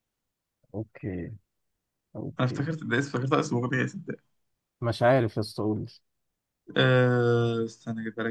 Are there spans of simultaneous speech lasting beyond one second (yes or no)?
no